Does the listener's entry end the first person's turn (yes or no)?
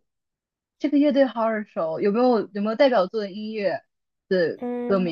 yes